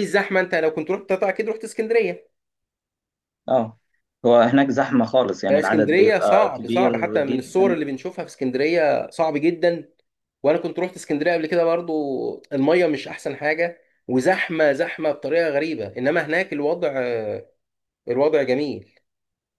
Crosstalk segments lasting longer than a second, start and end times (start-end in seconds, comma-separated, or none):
5.5-7.8